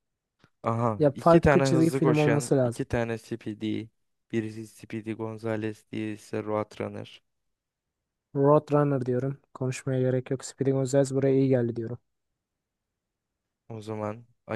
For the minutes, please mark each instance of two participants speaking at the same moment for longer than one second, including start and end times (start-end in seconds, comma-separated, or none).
1.0-2.8